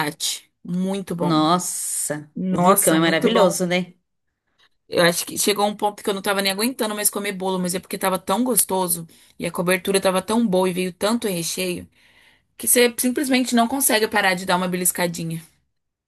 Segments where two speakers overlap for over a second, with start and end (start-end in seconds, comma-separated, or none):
2.4-3.6